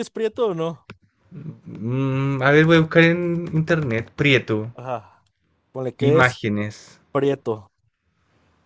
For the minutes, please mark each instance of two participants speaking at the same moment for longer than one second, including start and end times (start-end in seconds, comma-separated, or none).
none